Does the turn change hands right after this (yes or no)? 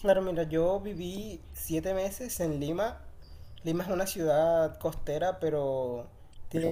no